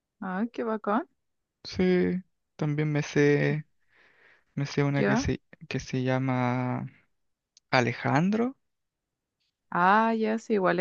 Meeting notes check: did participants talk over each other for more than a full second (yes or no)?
no